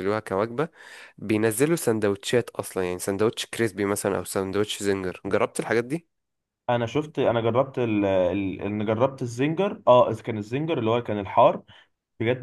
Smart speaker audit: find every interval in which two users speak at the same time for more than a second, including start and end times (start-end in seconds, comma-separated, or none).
none